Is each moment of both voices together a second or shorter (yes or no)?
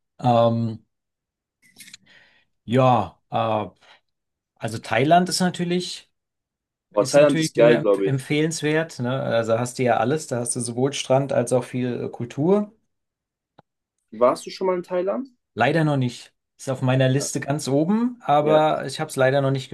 no